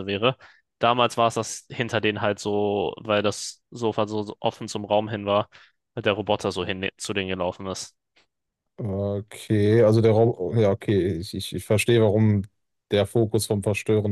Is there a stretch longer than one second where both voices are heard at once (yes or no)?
no